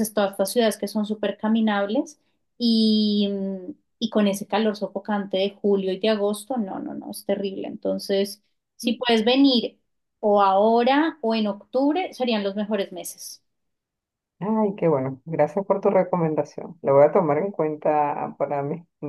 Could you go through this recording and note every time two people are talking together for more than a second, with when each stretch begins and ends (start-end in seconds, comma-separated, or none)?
none